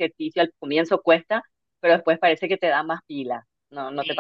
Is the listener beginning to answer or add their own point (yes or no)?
yes